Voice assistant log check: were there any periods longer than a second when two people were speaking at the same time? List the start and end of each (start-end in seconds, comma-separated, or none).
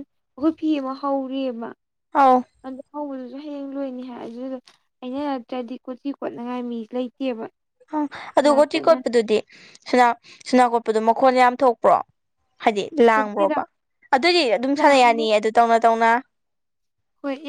none